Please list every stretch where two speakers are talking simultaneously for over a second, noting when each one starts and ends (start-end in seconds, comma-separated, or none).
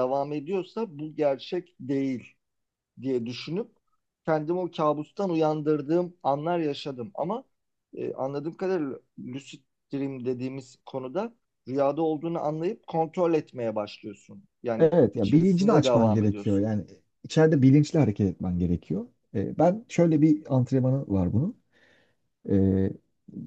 14.8-16.7